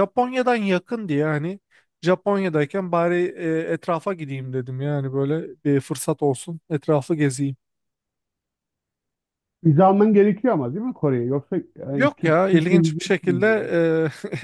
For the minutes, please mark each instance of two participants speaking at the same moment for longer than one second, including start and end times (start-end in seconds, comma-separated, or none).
11.9-13.5